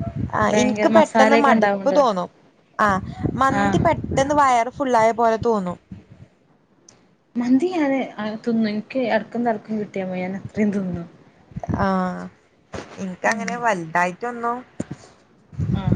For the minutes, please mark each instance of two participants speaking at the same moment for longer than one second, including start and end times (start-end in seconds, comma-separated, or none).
0.5-2.0